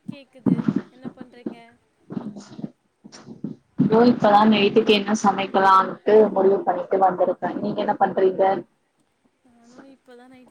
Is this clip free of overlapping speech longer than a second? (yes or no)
yes